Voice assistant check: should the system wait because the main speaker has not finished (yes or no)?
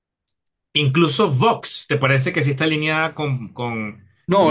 no